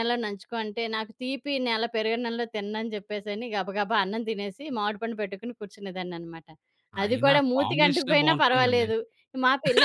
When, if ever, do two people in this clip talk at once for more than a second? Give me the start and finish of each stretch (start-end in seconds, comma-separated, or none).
7.0-8.9